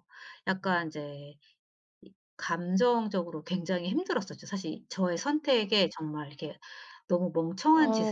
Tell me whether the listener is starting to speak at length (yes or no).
yes